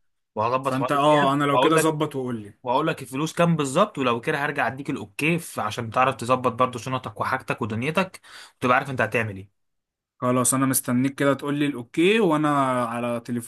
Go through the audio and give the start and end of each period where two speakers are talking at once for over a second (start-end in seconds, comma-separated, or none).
0.6-2.0